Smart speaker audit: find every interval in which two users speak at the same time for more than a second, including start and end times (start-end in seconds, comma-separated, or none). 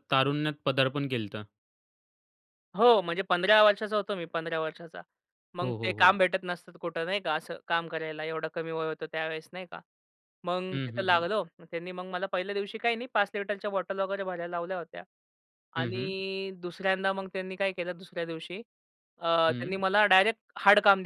none